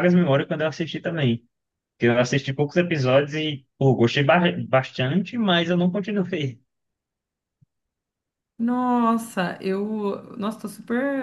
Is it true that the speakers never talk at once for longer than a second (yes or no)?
yes